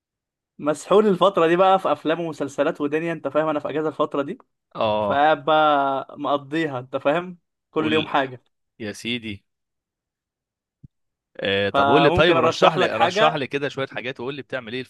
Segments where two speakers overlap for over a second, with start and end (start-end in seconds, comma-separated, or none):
11.7-13.4